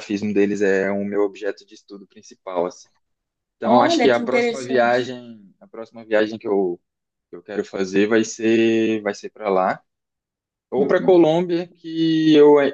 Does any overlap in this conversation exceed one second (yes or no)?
yes